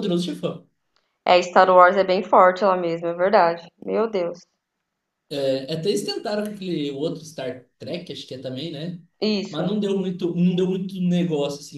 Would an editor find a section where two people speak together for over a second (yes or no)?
no